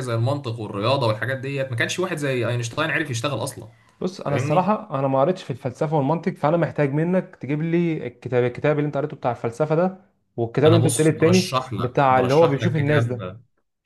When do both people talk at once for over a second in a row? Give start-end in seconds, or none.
10.7-13.2